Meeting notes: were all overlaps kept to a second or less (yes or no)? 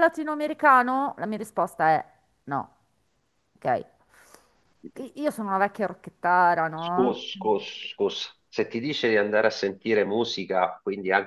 yes